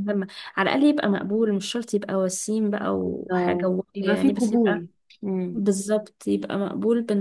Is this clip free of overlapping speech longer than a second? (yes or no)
no